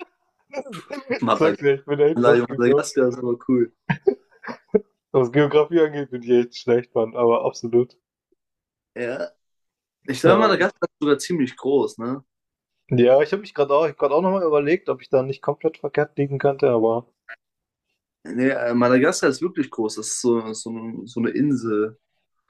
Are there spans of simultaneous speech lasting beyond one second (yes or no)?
yes